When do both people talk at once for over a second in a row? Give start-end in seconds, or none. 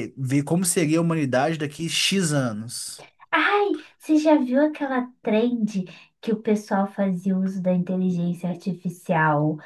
none